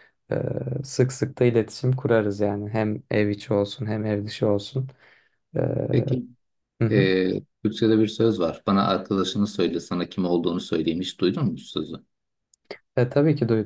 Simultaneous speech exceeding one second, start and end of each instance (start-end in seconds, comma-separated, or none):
none